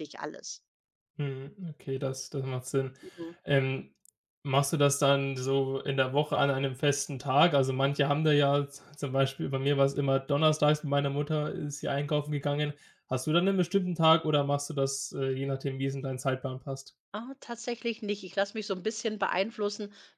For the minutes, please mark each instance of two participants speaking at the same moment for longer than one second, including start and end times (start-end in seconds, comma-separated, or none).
none